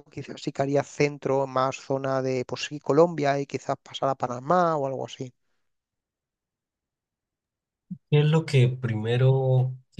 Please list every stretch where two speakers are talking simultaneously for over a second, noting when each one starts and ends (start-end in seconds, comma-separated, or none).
none